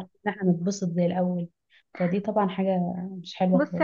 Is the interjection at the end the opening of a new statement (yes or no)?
yes